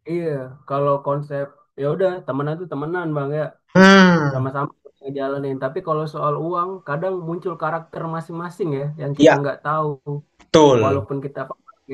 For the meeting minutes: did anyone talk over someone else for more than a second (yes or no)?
no